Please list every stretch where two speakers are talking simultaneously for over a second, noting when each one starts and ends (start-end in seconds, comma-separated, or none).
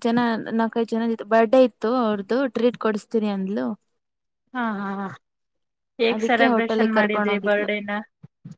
6.1-7.7